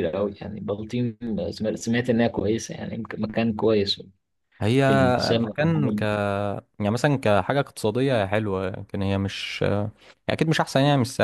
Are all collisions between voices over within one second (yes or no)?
yes